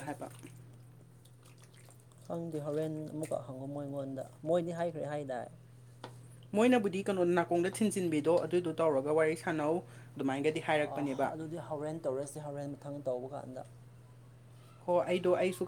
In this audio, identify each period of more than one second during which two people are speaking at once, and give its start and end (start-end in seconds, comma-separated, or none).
none